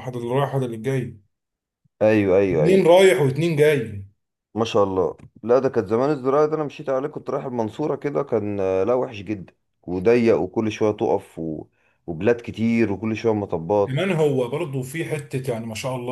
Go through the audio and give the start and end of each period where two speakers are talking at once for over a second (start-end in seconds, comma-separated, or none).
none